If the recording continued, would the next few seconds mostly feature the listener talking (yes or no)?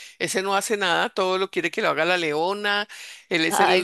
no